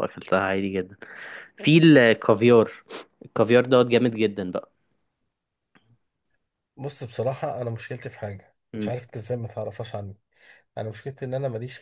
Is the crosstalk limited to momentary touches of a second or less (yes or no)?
yes